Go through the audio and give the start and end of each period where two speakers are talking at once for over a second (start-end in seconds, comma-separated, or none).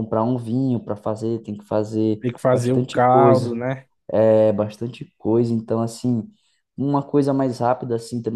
2.2-3.5